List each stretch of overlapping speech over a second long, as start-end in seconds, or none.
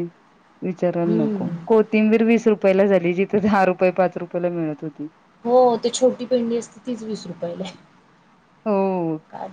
none